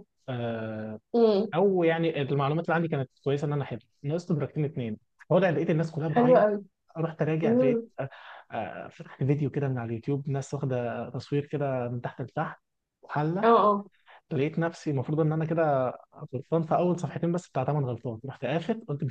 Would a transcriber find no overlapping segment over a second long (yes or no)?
yes